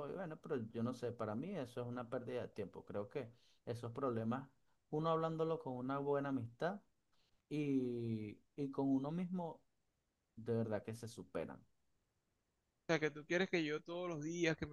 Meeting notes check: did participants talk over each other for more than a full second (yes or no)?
no